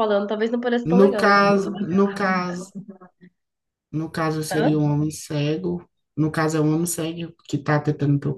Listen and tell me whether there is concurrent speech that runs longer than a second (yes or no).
yes